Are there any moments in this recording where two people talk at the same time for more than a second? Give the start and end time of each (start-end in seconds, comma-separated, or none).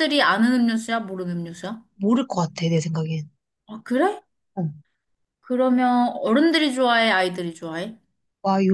none